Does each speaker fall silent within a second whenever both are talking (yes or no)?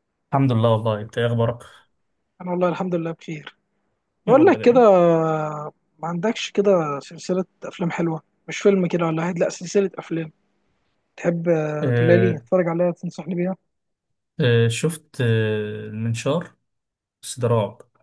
yes